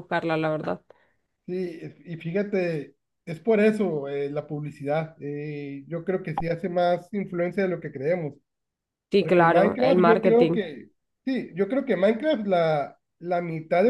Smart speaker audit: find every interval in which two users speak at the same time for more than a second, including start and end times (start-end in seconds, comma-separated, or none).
9.2-10.6